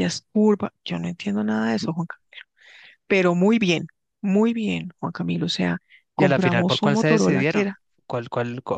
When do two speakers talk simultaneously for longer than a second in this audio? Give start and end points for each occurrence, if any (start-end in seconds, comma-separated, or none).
6.2-7.8